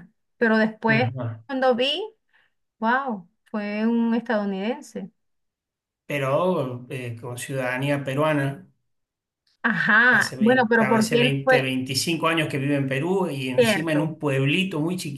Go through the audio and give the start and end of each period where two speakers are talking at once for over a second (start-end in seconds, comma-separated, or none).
10.1-11.7